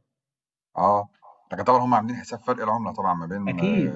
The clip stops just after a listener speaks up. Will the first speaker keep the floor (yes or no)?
no